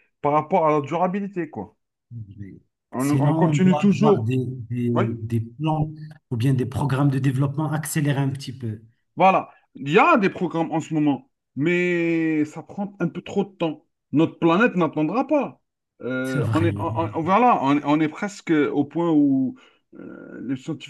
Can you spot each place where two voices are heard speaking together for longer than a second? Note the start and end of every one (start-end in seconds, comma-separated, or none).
3.0-4.3